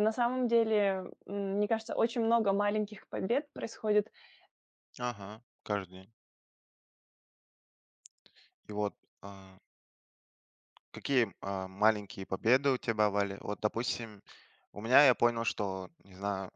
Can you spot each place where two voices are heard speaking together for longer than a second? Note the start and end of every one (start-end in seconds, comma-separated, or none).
none